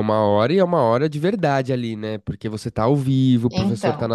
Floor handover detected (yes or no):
no